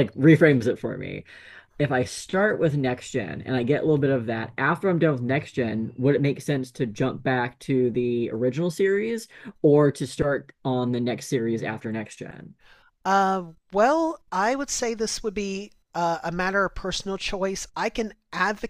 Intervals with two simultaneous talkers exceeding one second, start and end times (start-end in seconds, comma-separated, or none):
none